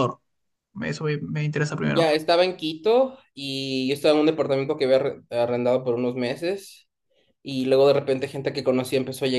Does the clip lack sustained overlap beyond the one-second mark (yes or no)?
yes